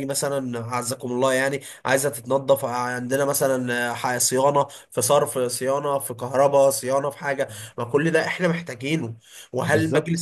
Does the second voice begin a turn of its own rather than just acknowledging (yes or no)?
no